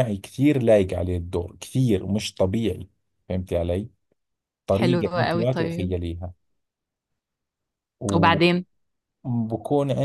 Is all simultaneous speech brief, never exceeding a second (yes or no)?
no